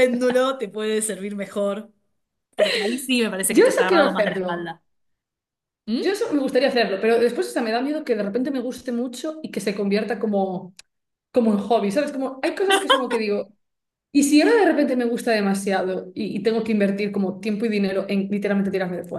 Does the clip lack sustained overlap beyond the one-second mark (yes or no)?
no